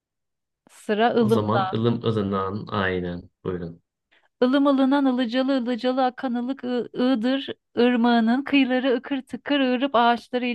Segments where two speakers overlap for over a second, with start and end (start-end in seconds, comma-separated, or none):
none